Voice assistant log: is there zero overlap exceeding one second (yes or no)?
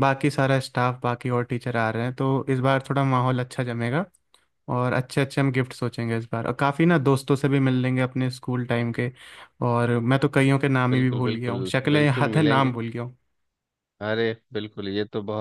no